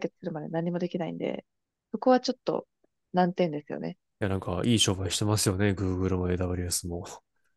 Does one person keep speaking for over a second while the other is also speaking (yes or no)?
no